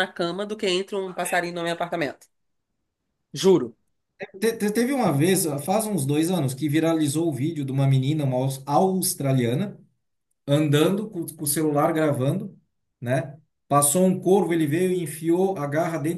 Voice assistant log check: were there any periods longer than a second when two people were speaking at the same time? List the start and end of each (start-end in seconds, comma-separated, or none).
none